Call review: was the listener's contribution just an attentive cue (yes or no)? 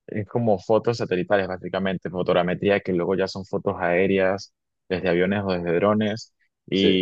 yes